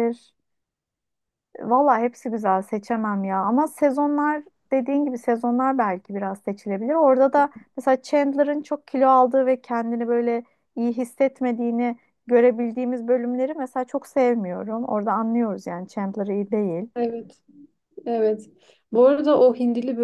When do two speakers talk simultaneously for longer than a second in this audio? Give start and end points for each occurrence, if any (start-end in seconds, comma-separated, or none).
none